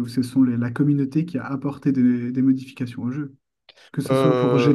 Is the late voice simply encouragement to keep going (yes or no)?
yes